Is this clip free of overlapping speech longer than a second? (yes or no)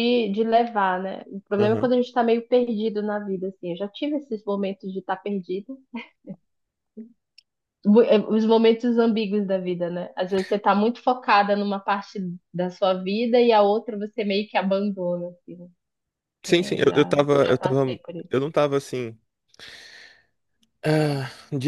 no